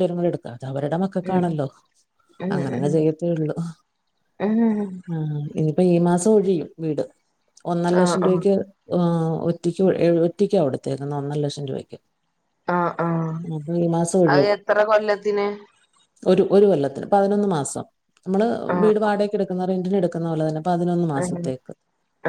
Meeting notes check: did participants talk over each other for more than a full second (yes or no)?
no